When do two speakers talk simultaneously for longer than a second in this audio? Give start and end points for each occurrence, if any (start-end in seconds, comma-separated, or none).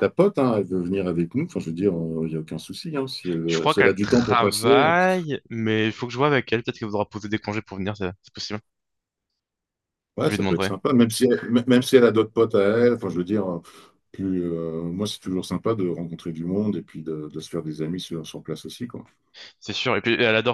3.5-4.9